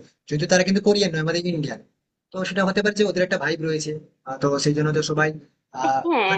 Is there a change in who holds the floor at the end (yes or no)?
no